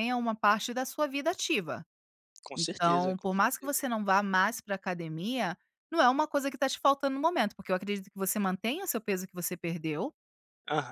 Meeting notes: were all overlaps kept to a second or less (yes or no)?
no